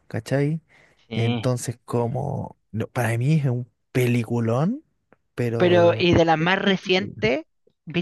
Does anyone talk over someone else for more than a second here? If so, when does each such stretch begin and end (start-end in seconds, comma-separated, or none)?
5.6-7.1